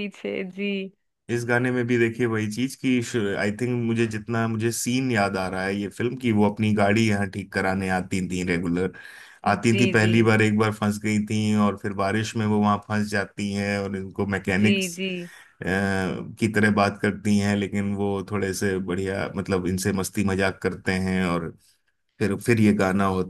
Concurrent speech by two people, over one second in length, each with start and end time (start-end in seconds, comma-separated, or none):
none